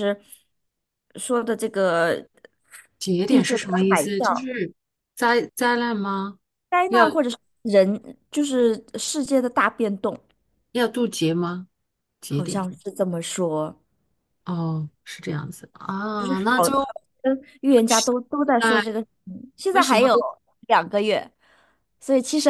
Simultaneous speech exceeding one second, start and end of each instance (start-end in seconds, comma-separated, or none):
3.3-4.5